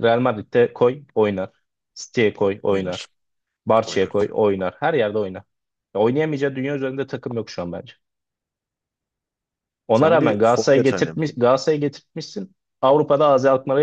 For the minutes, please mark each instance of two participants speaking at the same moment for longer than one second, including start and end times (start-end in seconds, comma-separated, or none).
9.9-11.1